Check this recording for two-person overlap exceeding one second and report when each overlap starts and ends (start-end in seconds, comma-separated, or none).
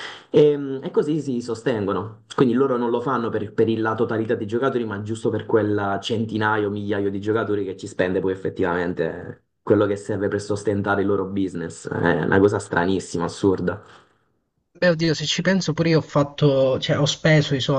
none